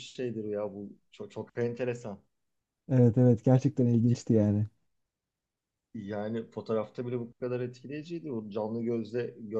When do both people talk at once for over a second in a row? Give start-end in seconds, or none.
none